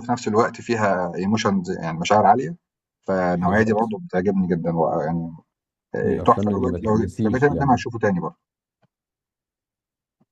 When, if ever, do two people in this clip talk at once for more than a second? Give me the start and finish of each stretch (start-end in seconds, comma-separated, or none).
6.0-7.8